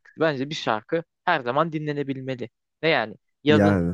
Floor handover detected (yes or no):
no